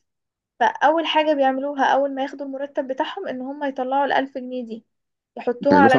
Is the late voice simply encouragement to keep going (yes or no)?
no